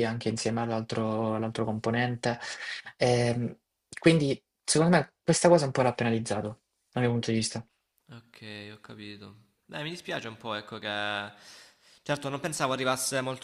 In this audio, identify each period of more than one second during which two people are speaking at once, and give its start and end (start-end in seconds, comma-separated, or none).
none